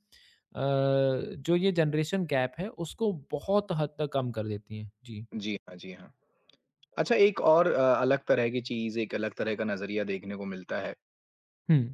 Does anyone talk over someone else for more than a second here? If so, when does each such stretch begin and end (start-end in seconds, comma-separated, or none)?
none